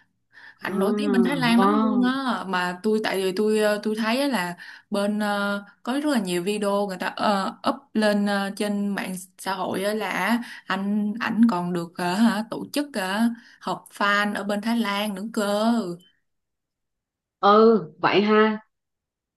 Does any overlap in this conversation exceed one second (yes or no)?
yes